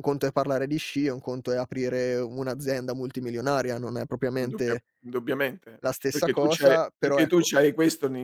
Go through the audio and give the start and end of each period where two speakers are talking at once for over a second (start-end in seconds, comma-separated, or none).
5.8-7.5